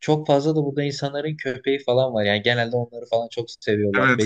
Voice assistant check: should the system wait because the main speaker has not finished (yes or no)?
no